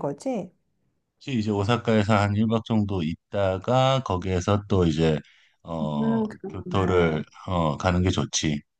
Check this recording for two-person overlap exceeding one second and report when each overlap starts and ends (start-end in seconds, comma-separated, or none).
5.8-7.2